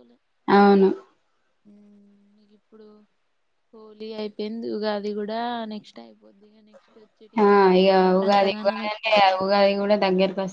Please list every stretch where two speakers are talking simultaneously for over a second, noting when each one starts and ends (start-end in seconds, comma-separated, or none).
none